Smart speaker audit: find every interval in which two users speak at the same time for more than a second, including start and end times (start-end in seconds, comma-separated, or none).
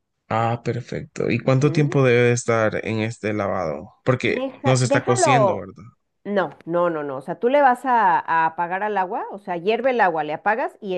4.2-5.7